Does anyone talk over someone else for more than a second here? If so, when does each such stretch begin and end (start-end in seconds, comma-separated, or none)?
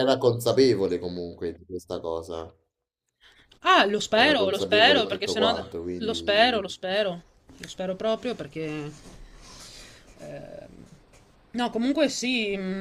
4.1-6.6